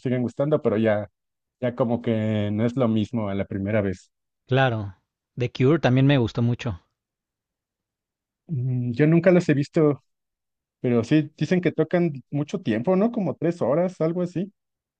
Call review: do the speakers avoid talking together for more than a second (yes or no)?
yes